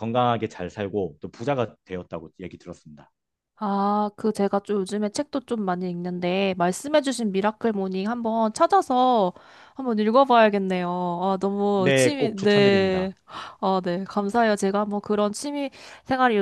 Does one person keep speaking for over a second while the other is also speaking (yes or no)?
yes